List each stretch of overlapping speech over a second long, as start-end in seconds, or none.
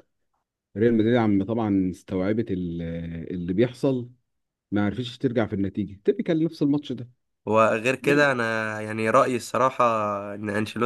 none